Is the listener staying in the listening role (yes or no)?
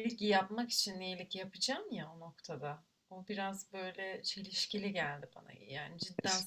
yes